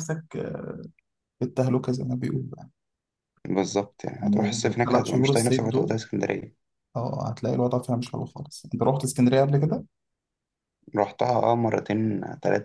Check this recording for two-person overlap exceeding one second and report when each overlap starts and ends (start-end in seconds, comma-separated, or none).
4.2-5.9